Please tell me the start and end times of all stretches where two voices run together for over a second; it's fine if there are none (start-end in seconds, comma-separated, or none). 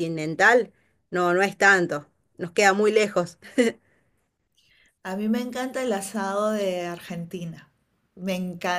none